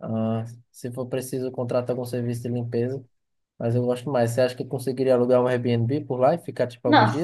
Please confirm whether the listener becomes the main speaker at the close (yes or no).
yes